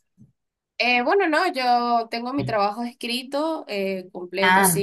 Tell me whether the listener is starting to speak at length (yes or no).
no